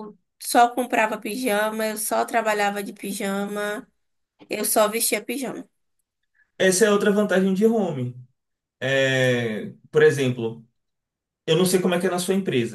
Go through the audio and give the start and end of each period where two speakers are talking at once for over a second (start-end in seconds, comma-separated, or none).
none